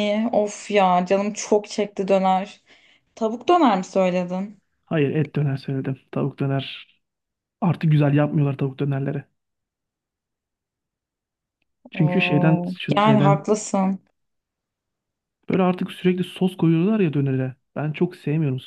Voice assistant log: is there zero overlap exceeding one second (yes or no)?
no